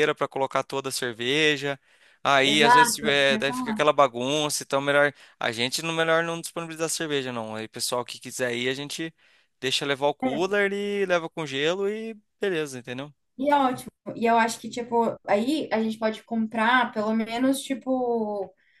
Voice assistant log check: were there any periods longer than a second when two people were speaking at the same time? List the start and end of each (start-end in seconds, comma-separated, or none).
2.4-3.9